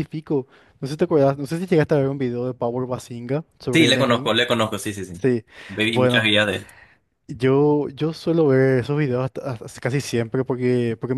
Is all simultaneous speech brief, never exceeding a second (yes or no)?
yes